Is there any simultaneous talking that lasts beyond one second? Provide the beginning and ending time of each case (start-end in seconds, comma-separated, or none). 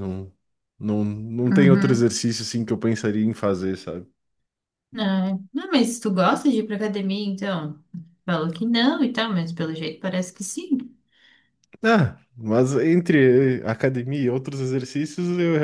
none